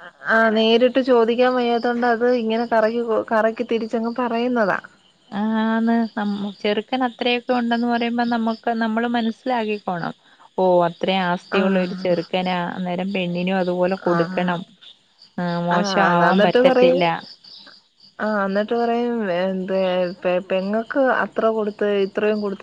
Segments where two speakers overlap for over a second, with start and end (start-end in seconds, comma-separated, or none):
none